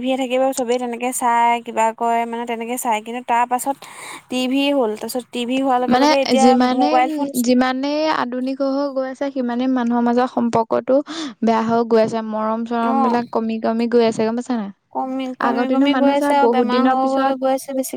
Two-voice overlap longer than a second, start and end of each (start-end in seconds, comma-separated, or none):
15.5-17.3